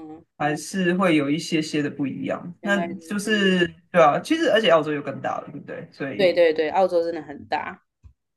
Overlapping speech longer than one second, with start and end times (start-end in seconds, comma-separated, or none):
none